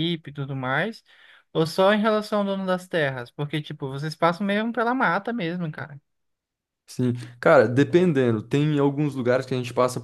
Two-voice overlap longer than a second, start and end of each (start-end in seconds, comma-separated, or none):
none